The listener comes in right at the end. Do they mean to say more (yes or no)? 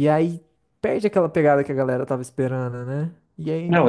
no